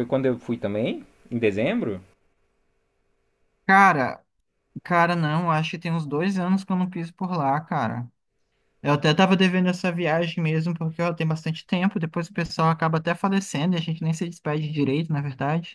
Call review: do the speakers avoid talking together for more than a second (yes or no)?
yes